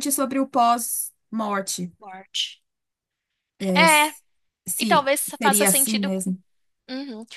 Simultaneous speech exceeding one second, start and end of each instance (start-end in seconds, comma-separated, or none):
4.8-6.3